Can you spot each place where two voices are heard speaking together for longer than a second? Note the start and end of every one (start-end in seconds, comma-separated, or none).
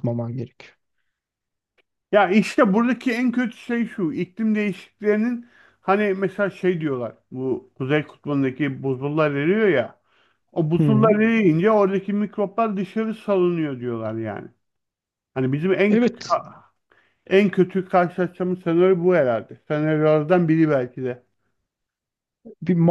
none